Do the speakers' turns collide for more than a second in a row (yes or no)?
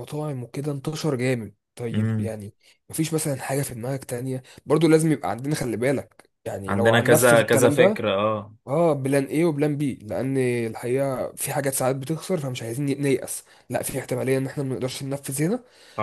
yes